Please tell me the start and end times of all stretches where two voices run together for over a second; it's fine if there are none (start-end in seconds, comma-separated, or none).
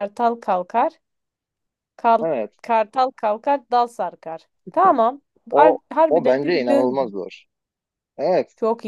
5.5-7.0